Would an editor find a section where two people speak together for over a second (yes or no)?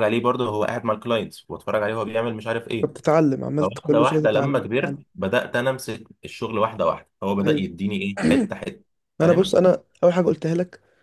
yes